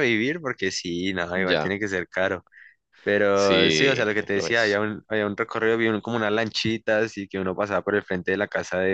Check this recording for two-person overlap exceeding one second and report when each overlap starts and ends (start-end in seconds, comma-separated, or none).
3.3-4.8